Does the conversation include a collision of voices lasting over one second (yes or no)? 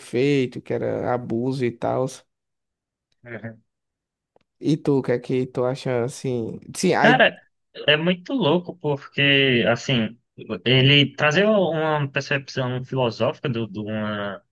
no